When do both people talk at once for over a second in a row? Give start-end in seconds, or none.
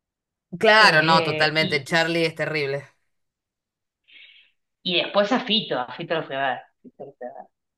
0.8-2.0